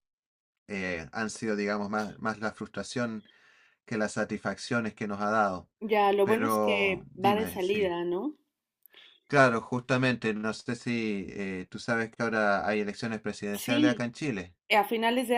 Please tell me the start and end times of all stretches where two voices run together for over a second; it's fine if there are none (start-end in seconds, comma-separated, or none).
6.2-8.0